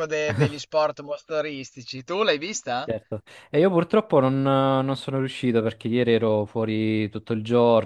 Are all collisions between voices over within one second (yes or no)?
yes